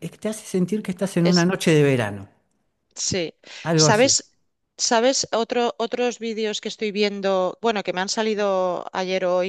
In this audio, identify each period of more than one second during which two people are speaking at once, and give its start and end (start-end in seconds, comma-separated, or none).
none